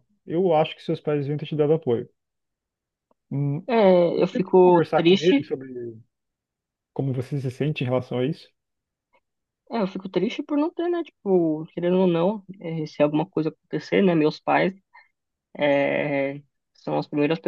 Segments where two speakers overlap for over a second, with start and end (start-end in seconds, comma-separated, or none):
4.2-5.5